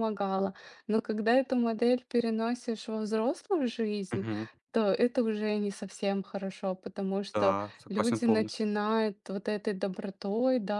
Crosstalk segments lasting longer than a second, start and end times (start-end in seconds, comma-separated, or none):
7.3-8.7